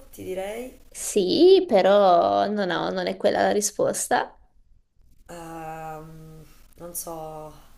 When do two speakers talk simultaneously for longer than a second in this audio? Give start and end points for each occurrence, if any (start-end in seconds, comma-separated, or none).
none